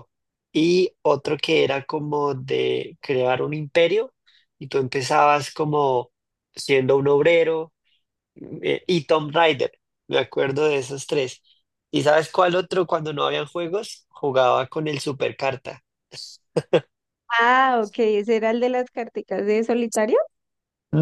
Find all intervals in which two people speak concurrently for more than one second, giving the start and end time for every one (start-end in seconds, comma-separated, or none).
none